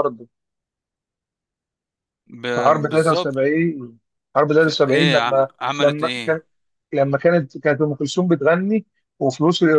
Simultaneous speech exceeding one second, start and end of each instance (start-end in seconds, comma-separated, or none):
4.6-6.4